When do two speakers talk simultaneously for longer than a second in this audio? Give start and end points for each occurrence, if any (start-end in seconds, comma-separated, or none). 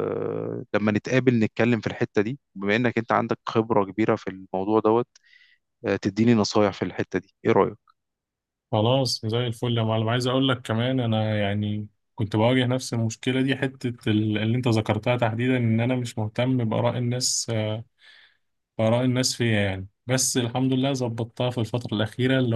none